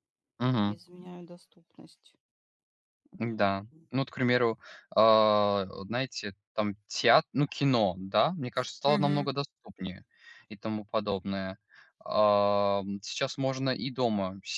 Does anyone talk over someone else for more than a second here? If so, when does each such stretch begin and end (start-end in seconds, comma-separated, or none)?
none